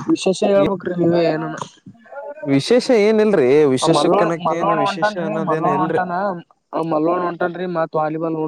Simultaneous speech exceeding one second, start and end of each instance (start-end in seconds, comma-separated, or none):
3.8-6.0